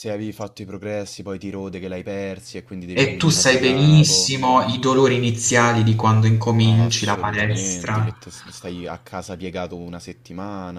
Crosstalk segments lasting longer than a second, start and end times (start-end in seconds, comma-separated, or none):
2.9-4.3, 6.6-8.1